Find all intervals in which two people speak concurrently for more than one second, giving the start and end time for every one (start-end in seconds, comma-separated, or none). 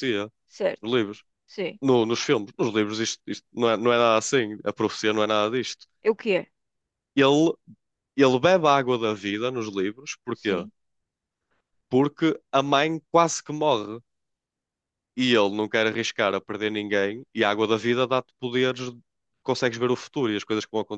none